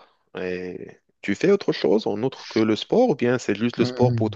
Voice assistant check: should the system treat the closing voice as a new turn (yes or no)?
yes